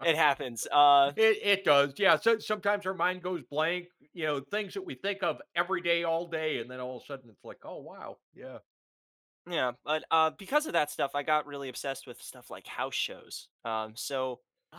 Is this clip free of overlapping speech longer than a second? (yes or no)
yes